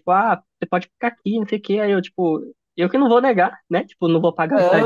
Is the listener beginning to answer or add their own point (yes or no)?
yes